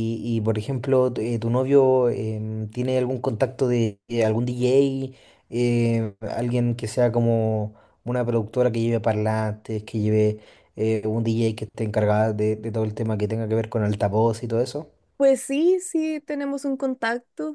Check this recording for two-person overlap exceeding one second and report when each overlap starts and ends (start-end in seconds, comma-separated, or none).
none